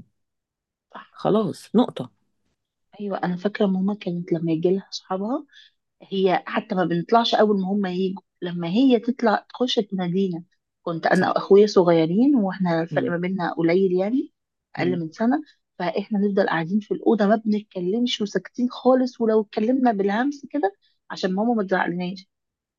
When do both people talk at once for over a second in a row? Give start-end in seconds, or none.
none